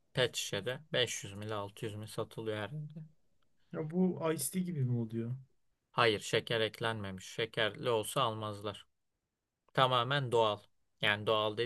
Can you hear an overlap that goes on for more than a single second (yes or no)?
no